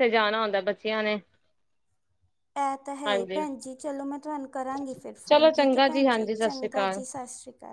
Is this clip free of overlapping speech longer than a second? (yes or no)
no